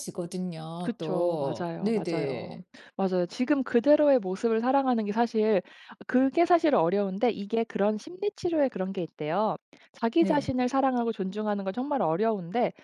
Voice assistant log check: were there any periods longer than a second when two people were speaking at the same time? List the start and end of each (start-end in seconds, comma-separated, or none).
0.8-2.6